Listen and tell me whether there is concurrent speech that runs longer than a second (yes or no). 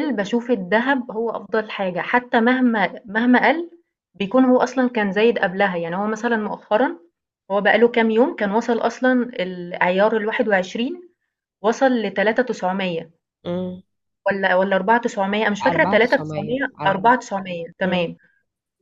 yes